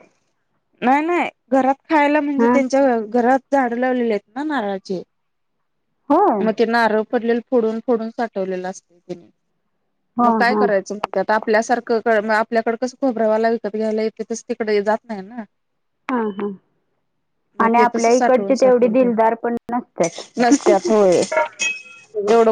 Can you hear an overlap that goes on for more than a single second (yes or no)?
yes